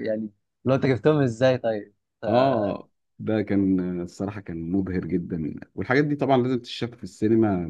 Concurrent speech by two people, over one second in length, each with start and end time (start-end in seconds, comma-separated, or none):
none